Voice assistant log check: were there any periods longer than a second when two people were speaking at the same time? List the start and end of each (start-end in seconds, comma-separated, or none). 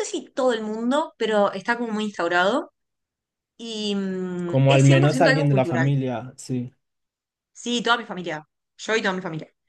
4.5-5.9